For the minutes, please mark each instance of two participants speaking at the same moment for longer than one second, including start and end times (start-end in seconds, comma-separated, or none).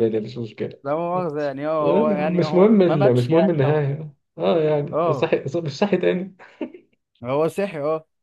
1.8-3.8